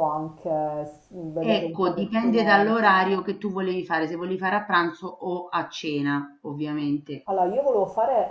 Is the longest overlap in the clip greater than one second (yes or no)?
yes